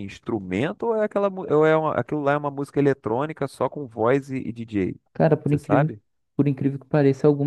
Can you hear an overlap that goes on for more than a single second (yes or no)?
no